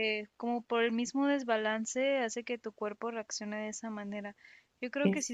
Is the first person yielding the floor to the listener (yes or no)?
no